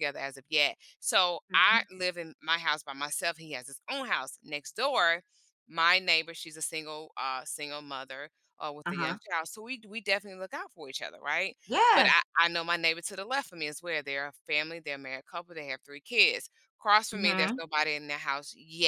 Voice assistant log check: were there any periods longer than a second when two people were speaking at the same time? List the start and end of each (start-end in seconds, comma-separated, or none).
none